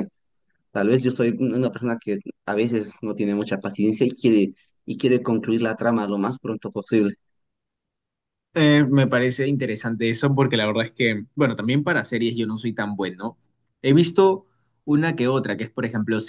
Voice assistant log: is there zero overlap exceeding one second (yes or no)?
yes